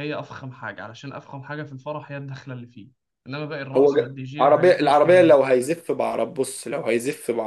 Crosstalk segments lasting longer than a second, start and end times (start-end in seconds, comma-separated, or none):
3.8-5.4